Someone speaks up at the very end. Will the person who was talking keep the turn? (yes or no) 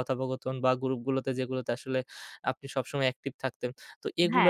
yes